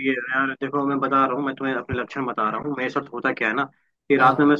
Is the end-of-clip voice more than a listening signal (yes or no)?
no